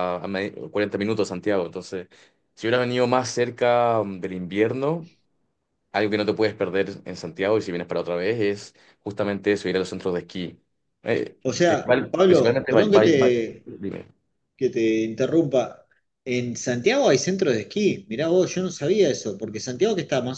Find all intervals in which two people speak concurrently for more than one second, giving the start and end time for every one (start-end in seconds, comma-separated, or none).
11.4-13.7